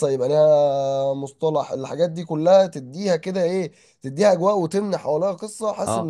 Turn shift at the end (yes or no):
yes